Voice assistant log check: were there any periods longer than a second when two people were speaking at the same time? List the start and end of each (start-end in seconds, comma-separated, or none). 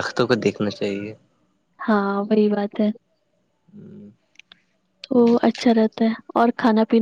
none